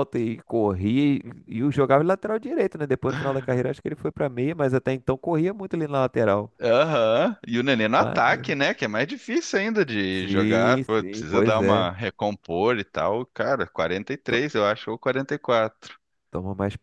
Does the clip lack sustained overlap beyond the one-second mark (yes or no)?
no